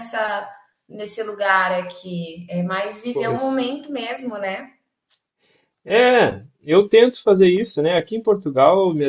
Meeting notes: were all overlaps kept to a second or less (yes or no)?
yes